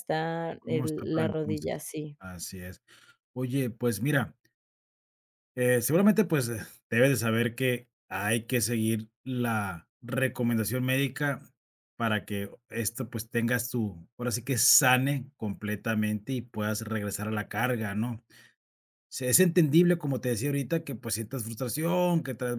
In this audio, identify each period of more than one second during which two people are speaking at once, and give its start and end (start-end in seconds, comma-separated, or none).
0.6-1.8